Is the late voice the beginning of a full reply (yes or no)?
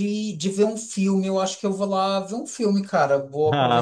no